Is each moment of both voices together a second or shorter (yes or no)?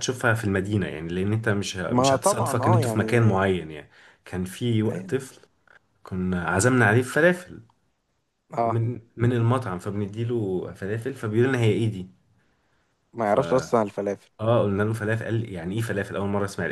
no